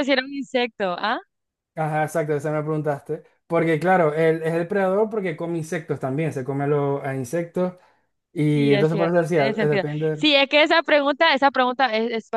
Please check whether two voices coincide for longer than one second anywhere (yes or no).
yes